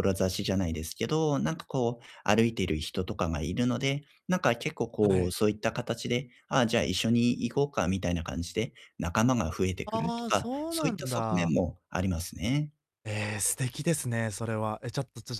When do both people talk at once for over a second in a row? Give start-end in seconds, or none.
9.8-11.6